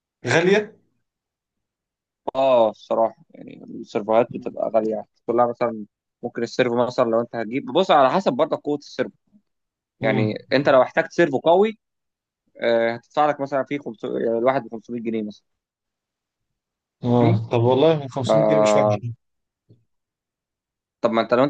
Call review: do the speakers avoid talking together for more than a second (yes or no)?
yes